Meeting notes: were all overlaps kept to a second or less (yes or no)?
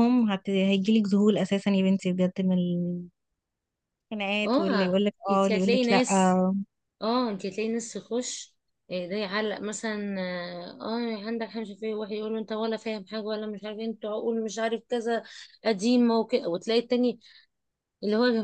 no